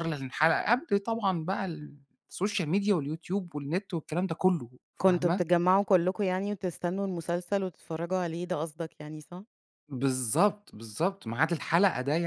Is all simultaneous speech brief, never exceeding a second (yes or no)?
yes